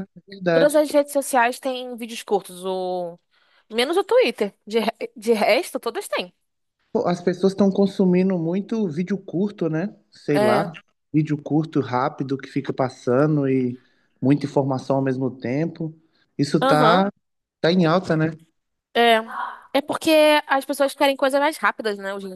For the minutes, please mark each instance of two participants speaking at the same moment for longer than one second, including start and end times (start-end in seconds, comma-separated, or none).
none